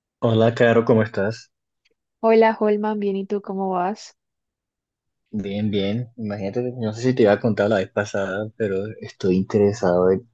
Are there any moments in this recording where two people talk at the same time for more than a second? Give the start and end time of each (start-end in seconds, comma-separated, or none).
none